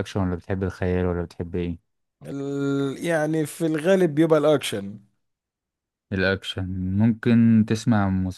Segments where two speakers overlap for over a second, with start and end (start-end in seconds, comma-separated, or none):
none